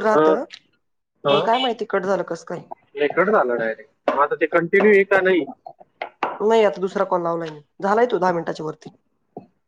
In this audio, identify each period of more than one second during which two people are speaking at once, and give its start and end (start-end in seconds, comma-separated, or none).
none